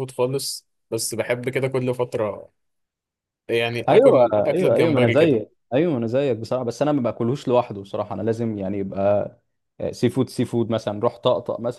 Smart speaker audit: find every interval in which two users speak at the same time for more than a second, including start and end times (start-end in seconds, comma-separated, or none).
3.9-5.4